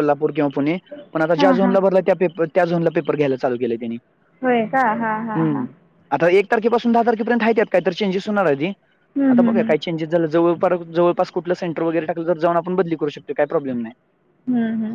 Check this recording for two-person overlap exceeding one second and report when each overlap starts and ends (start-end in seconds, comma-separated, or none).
none